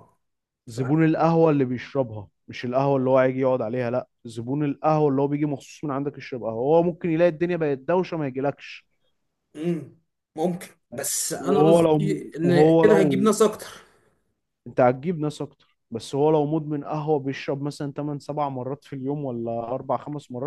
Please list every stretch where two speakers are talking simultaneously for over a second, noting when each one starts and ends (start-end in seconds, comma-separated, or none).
11.4-13.3